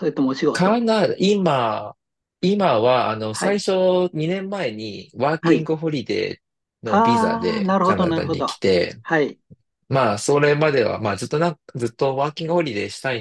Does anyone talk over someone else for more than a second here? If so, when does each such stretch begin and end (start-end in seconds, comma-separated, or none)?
6.8-8.5